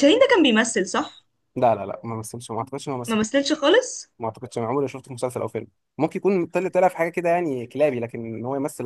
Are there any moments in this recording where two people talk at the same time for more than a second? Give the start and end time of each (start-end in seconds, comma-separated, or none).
none